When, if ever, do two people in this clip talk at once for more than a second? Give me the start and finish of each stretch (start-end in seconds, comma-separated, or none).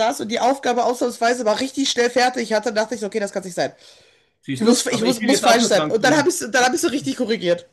4.6-6.4